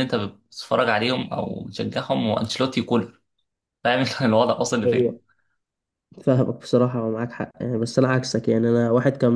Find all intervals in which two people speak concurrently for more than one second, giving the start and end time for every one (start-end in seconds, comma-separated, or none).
none